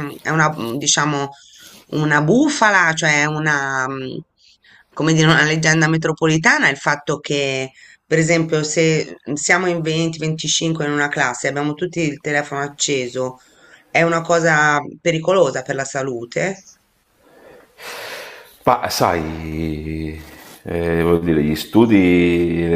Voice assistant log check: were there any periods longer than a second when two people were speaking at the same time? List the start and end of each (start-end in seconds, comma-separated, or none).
none